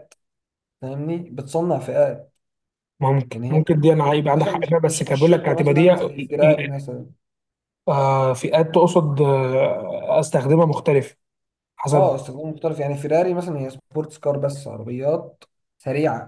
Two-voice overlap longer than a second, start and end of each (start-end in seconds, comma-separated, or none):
4.4-6.6